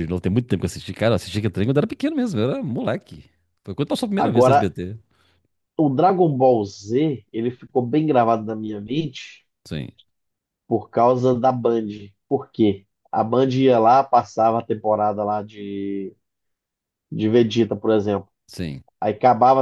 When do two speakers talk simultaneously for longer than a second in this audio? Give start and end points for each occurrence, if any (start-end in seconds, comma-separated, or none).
none